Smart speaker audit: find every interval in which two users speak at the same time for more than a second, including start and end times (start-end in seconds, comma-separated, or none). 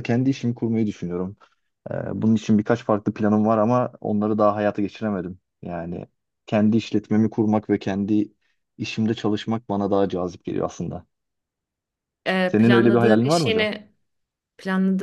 12.4-13.7